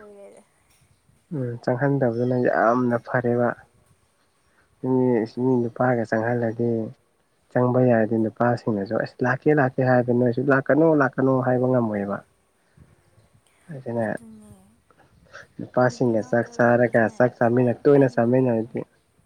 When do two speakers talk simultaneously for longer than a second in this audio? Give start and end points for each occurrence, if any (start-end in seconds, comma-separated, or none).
15.9-18.7